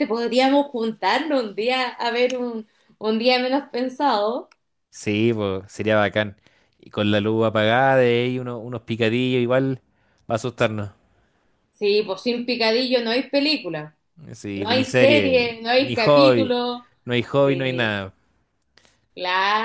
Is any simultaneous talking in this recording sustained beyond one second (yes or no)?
yes